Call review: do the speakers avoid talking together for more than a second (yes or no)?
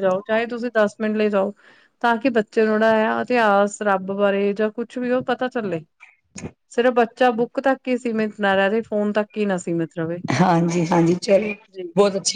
yes